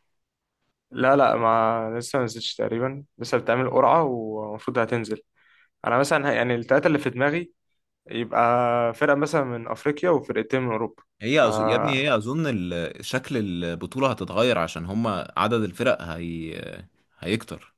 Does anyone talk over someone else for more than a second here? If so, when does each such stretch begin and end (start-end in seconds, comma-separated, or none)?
none